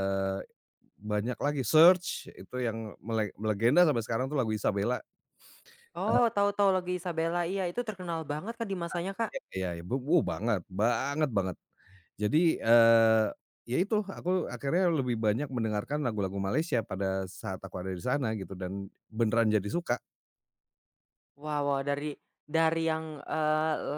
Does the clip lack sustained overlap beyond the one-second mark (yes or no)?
yes